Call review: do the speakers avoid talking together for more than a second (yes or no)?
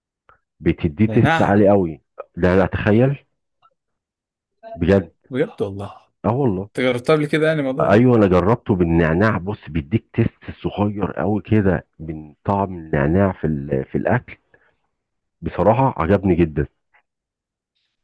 yes